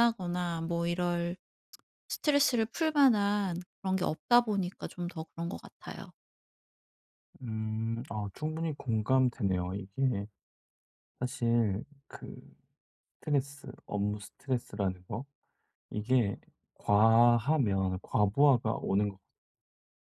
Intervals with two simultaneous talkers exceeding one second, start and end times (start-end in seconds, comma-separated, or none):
none